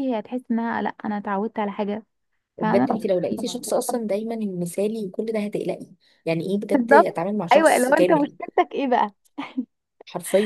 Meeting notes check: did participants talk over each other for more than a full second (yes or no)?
yes